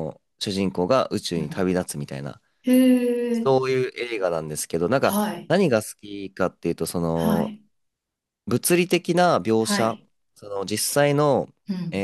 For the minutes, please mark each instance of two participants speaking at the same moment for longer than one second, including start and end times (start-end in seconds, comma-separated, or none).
none